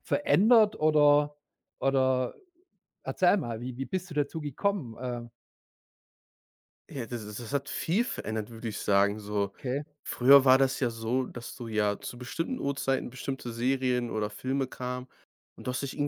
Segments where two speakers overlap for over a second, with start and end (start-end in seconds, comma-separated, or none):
none